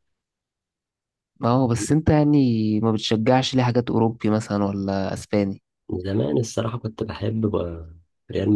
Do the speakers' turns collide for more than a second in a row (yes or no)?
no